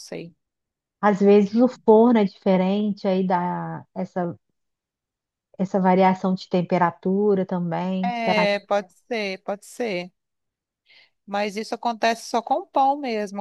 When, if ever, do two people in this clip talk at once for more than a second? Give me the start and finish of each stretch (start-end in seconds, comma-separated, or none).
none